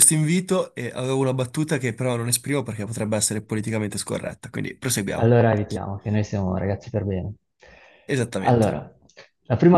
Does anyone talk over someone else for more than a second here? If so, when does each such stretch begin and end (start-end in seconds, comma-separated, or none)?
none